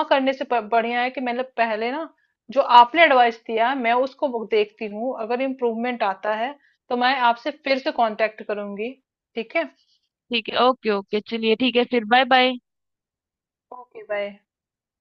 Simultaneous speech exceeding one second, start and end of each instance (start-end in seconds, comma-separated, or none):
none